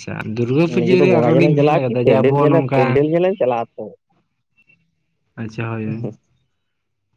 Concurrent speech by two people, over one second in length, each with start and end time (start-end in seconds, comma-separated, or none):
0.8-3.0